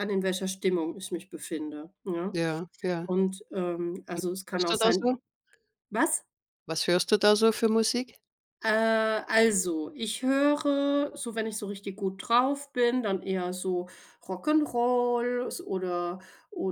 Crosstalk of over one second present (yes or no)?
no